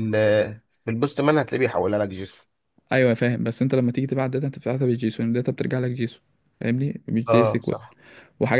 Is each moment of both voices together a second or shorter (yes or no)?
yes